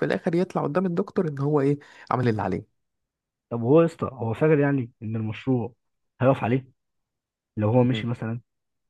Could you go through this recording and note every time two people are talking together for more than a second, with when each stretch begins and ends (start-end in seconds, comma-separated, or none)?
none